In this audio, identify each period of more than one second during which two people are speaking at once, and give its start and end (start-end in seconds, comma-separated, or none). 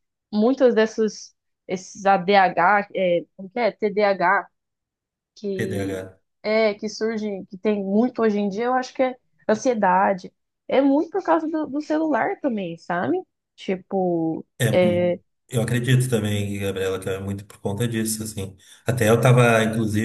none